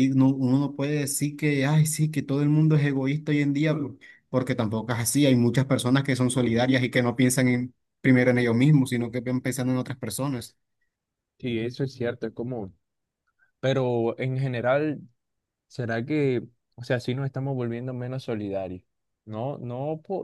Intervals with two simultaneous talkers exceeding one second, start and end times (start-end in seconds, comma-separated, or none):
none